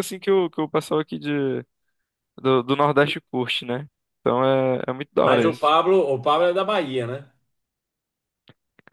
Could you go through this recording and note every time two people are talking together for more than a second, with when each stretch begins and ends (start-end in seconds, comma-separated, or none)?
none